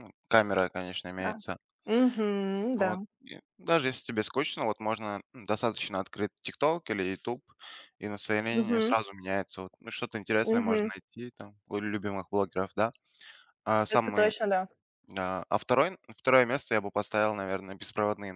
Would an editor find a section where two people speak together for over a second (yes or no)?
no